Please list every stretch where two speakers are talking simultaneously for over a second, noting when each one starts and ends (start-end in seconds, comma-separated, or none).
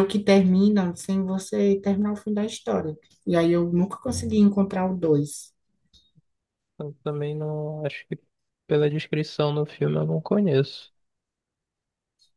none